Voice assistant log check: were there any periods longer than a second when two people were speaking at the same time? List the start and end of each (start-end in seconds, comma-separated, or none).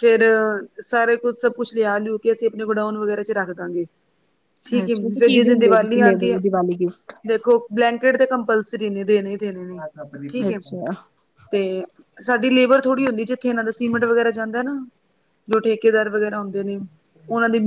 4.7-6.4